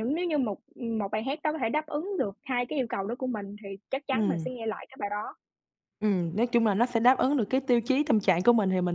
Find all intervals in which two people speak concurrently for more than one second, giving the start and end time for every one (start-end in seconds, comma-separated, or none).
none